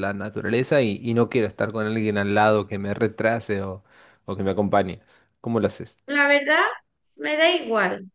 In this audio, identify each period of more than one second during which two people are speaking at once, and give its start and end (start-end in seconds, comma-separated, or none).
none